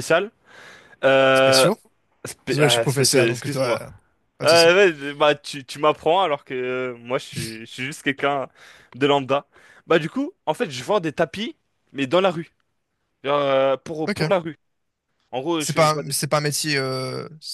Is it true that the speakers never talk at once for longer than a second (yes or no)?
no